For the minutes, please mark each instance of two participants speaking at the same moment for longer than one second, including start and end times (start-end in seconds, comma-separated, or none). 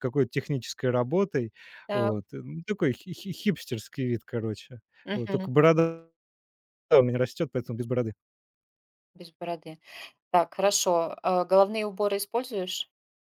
none